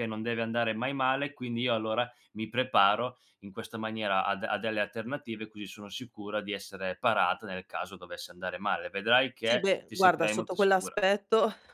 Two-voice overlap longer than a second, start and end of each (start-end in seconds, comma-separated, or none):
9.5-10.9